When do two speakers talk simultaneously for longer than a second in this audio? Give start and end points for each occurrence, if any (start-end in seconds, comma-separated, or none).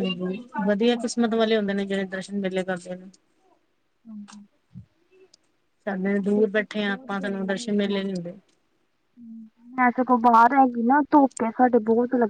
6.8-8.1